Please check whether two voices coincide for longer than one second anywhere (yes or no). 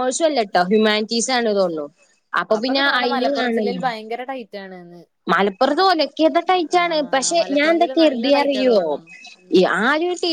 yes